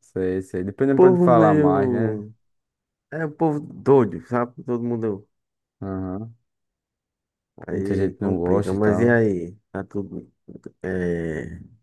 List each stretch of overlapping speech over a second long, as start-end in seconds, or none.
0.9-2.2, 7.7-9.2